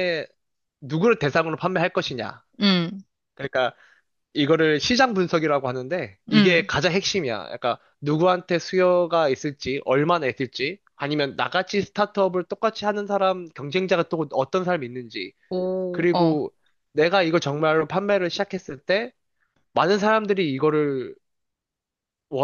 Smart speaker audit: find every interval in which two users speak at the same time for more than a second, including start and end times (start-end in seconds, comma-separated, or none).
none